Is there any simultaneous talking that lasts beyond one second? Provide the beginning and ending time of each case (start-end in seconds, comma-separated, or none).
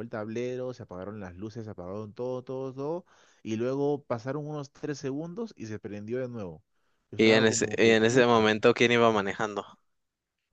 7.2-8.6